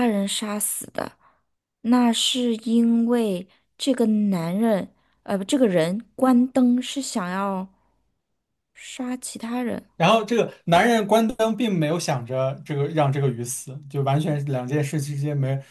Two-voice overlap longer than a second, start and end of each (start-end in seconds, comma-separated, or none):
none